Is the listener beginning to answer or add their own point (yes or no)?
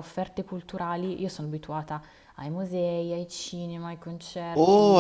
yes